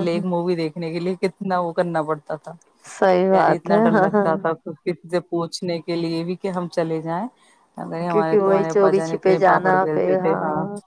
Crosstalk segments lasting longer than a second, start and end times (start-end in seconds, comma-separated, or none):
8.4-10.3